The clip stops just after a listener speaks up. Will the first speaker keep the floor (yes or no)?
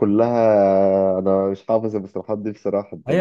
no